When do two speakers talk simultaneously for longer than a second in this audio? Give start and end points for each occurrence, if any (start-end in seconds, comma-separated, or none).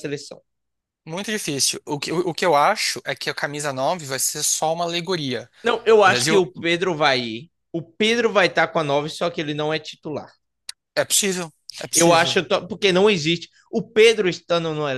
none